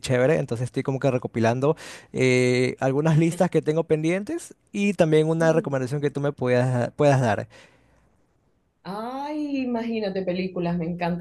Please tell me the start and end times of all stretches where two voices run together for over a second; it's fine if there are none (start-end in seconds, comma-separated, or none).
none